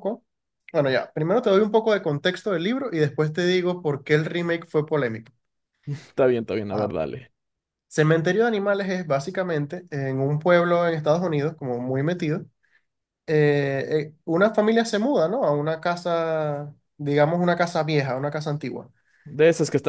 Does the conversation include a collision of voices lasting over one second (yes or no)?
no